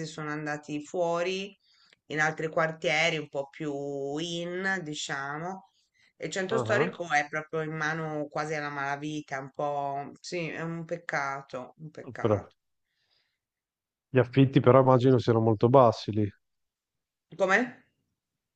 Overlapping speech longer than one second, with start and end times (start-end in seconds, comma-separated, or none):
none